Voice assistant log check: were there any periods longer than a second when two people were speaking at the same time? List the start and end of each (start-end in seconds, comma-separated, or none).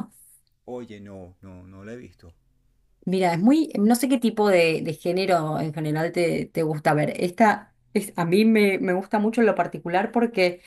none